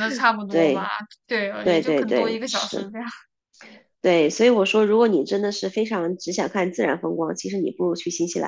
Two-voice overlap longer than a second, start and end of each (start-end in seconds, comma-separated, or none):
1.6-2.9